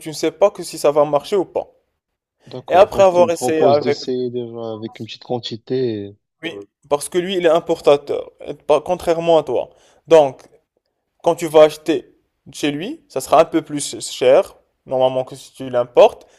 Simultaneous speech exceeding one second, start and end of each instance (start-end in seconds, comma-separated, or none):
2.7-4.0